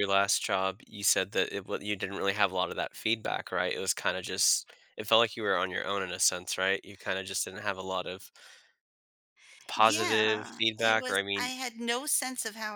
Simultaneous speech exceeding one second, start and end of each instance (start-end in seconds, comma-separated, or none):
9.8-11.5